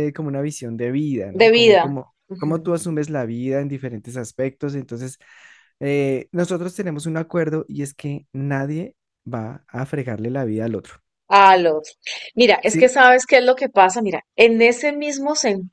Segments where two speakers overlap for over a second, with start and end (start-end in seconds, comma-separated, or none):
1.3-2.8